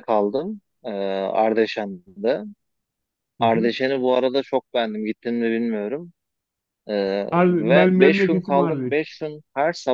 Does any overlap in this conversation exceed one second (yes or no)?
yes